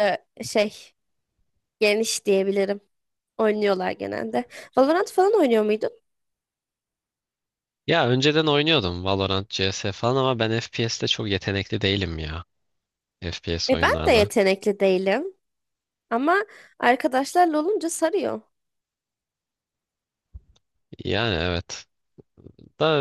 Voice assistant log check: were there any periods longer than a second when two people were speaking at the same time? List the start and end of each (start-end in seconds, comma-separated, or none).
none